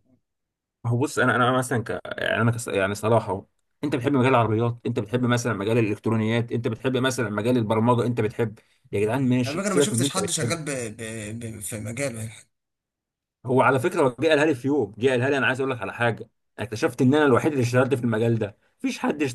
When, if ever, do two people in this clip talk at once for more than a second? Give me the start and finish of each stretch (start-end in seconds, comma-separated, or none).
9.5-10.7